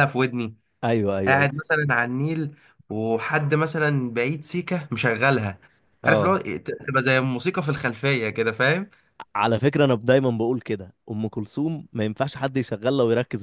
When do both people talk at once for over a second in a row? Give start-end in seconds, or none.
none